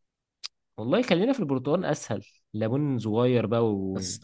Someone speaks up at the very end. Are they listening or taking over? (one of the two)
taking over